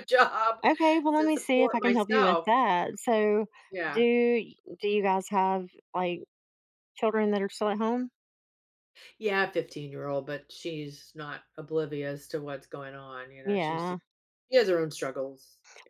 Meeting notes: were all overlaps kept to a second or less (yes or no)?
no